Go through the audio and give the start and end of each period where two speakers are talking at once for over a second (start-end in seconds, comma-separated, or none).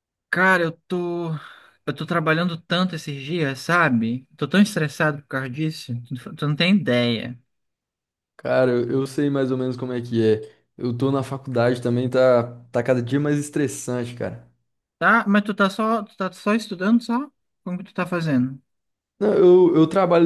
none